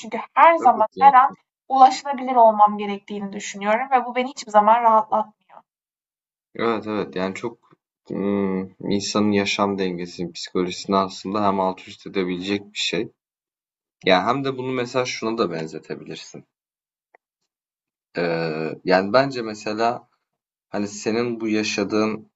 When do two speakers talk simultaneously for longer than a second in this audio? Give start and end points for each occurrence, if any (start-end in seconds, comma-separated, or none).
none